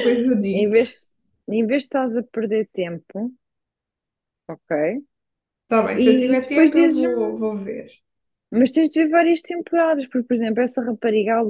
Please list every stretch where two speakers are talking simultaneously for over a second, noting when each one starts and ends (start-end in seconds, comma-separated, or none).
5.9-7.4